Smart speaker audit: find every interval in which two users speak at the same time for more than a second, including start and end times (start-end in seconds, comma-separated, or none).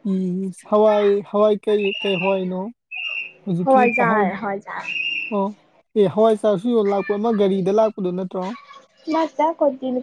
3.6-4.8